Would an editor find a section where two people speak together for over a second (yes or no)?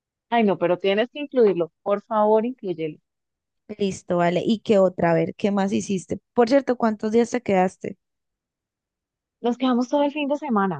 no